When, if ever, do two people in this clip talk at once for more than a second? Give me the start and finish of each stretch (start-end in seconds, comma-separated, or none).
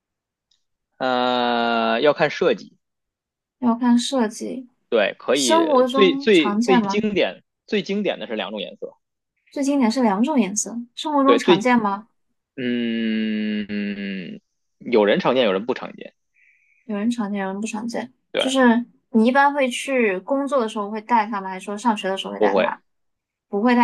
5.3-7.1